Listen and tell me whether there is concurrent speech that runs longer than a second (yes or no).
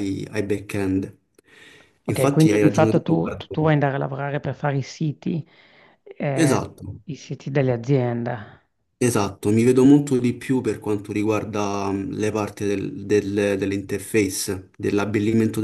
yes